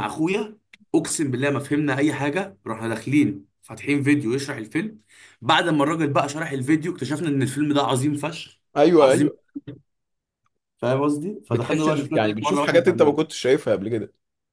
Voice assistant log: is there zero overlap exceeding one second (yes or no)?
no